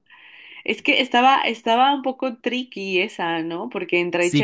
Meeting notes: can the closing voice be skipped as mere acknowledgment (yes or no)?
no